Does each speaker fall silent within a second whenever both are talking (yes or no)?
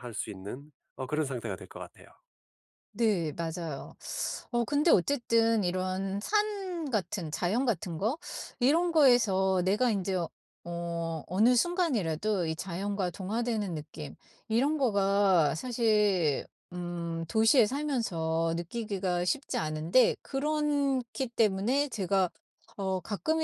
yes